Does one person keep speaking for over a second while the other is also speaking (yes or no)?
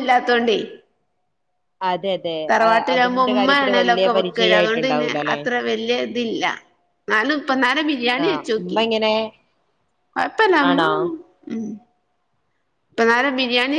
yes